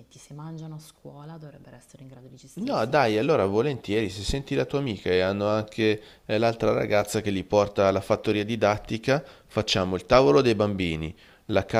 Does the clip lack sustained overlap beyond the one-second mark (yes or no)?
yes